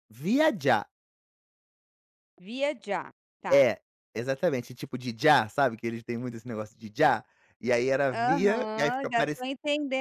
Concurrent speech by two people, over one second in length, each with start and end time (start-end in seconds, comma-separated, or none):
8.1-9.4